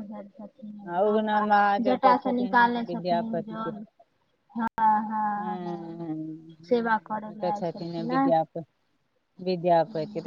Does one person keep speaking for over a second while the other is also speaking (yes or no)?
yes